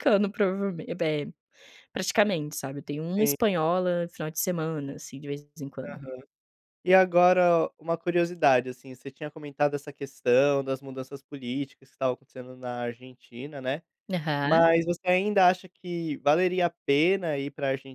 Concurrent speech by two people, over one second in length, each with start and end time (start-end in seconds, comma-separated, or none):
none